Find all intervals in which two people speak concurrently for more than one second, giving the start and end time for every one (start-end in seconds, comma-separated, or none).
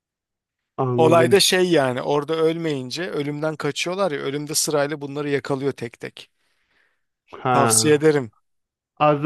none